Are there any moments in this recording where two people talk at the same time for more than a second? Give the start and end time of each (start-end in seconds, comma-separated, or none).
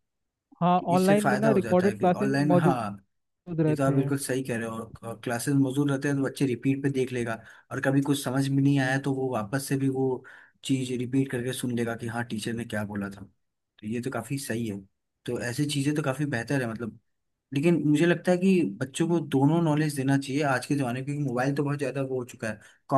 0.8-3.0